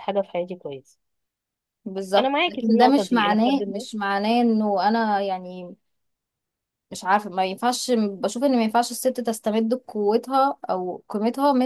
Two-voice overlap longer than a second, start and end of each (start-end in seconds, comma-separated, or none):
2.1-3.9